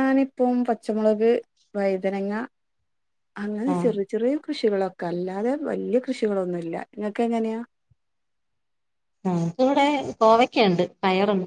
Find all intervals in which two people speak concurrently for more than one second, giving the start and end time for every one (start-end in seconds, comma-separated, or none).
none